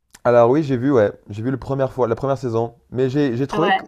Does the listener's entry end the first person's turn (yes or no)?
no